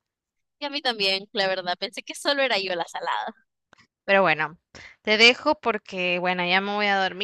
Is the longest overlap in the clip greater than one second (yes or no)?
no